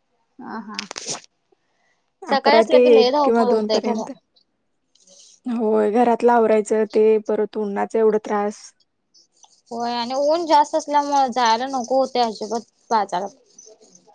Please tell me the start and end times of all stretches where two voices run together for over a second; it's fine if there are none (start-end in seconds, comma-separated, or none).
2.3-4.0